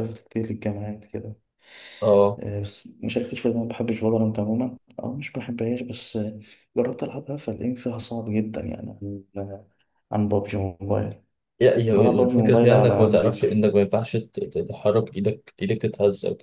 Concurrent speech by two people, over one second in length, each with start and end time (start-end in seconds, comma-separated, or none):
11.9-13.6